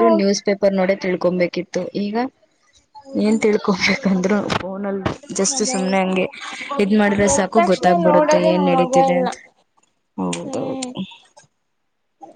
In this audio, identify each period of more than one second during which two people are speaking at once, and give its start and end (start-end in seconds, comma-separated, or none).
7.3-9.3